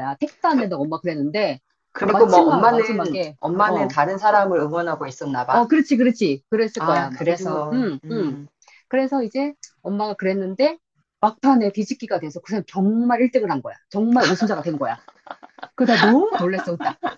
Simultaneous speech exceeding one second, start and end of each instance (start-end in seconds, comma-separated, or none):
2.1-3.9, 6.8-8.4